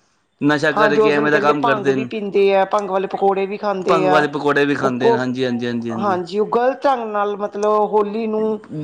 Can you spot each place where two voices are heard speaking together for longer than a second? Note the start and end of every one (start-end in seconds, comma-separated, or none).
0.8-2.1